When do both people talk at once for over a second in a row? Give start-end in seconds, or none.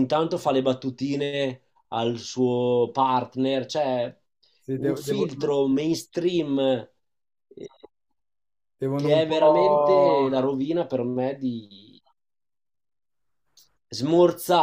8.9-10.3